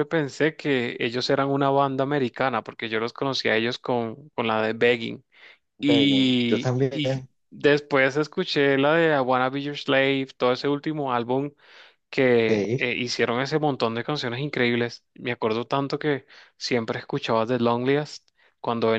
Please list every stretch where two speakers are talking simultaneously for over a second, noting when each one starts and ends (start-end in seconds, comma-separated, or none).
5.8-7.3